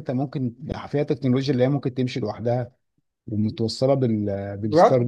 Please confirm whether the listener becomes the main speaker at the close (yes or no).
no